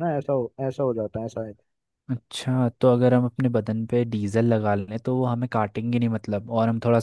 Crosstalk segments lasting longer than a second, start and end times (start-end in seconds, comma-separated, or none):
none